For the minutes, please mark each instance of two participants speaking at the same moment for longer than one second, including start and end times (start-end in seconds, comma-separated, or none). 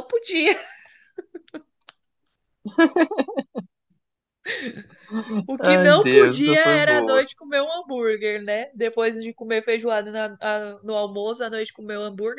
5.6-7.2